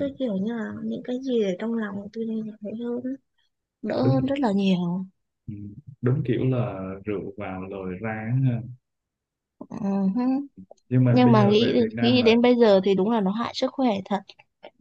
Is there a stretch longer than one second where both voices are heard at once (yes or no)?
yes